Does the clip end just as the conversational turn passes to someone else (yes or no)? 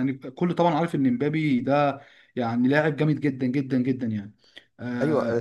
yes